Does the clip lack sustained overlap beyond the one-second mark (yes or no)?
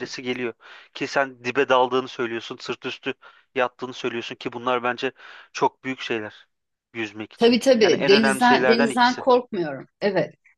no